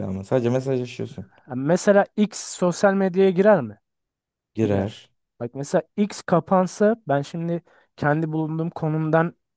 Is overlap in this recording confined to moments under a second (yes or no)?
yes